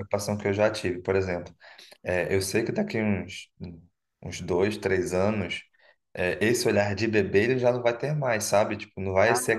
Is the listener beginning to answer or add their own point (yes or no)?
no